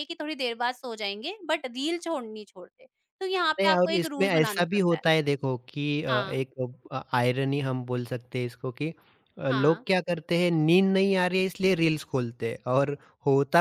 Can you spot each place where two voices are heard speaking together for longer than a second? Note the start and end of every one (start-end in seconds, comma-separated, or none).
3.6-5.0